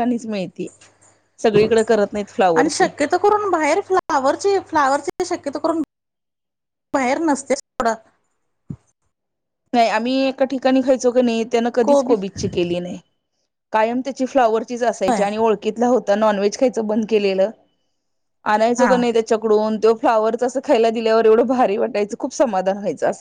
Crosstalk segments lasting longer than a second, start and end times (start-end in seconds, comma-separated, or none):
none